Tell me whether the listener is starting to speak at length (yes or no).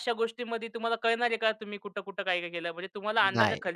no